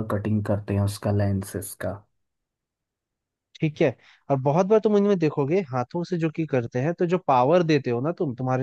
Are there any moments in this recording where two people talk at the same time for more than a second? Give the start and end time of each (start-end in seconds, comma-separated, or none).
none